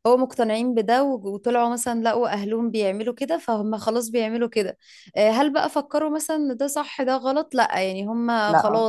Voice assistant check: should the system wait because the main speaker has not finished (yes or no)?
yes